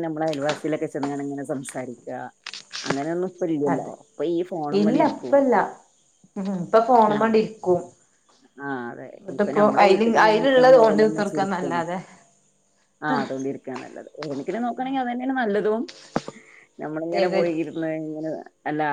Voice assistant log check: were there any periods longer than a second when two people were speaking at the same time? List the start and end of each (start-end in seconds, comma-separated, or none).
9.2-11.8